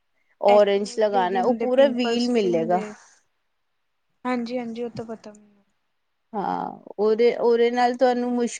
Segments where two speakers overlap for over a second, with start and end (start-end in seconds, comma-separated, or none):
0.5-2.3